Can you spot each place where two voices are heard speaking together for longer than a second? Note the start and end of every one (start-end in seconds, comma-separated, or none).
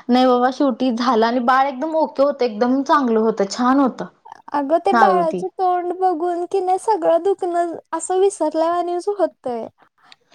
none